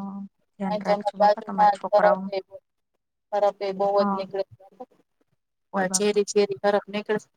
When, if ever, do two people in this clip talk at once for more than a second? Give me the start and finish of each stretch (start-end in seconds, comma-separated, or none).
0.7-2.2